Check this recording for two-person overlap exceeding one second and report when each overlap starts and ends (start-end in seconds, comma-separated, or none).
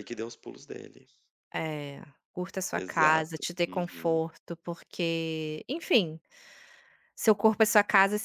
2.7-4.2